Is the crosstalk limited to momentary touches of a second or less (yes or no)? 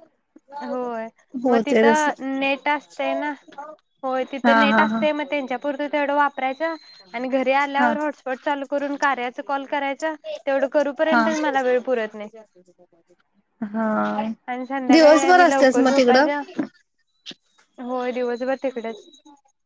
no